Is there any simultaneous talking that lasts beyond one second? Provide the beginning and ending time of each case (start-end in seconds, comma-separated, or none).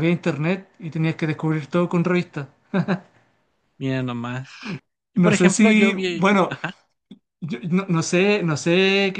5.1-6.5